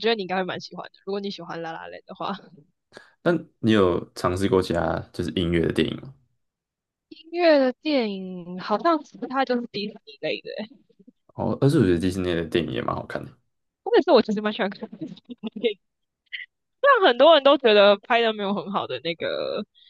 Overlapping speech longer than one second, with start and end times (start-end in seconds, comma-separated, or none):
none